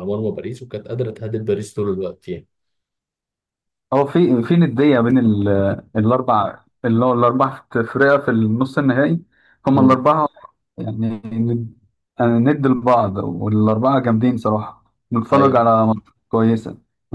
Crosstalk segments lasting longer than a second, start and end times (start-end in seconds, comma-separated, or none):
none